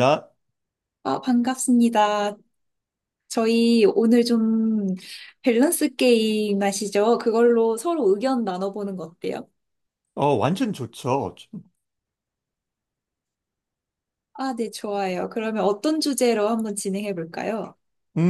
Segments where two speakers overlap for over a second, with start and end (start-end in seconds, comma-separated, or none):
none